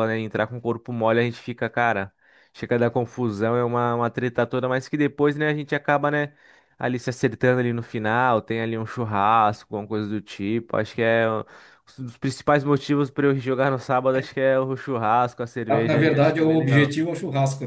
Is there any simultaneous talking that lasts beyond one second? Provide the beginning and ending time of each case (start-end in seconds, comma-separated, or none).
15.7-17.0